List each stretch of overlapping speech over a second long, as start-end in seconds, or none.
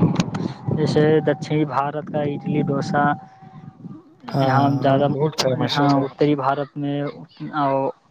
4.5-5.9